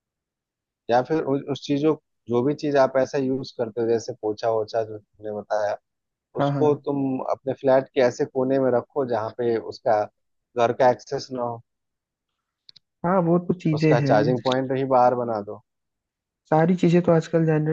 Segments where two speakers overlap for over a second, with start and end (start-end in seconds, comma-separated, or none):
none